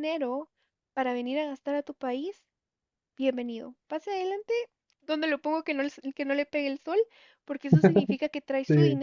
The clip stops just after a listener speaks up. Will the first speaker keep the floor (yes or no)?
yes